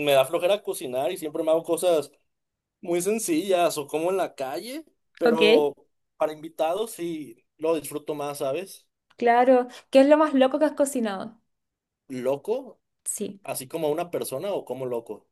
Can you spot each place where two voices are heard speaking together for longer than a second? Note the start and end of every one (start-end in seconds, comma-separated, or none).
none